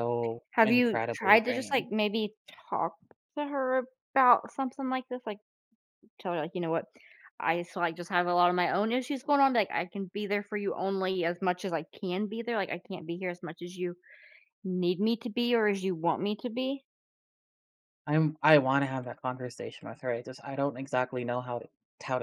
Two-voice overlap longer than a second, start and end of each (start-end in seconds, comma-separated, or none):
0.5-1.9